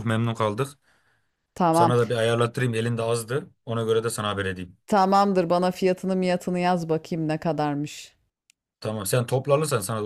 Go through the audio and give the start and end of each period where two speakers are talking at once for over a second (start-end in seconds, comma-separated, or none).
none